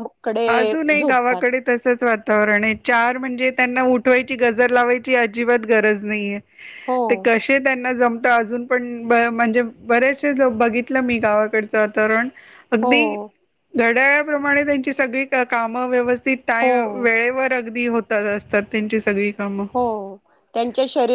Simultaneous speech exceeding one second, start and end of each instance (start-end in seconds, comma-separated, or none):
none